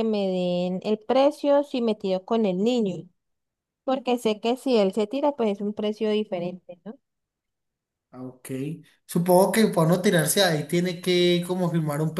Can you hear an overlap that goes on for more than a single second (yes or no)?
no